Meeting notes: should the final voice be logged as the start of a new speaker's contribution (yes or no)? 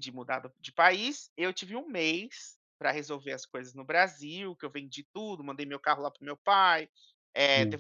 no